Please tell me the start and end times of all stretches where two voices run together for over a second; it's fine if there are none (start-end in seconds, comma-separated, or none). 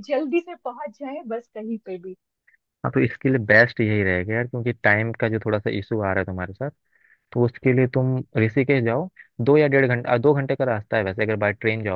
none